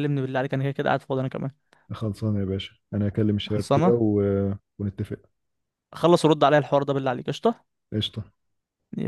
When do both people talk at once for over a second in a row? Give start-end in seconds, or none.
none